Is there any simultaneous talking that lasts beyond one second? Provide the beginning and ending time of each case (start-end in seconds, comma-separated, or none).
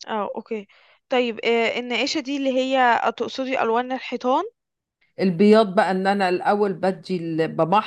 none